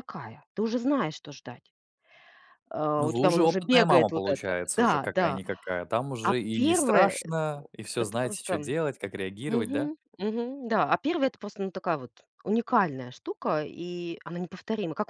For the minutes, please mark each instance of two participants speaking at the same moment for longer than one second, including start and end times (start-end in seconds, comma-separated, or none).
3.0-5.4, 6.2-8.8